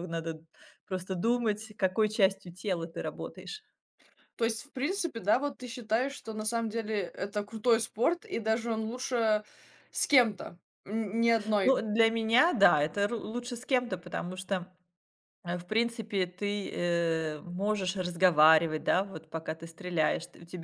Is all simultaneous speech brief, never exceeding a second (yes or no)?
yes